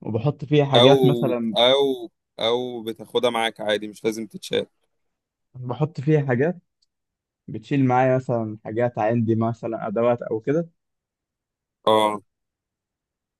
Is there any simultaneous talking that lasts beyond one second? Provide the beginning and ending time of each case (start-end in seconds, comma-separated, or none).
none